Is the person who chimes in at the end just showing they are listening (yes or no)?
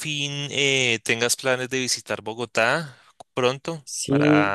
no